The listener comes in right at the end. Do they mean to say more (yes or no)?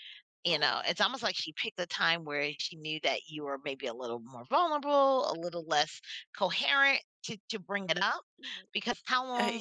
no